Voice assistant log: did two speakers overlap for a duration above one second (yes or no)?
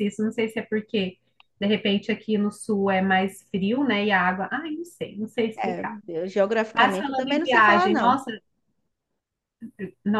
yes